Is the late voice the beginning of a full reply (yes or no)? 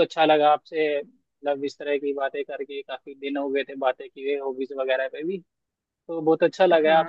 no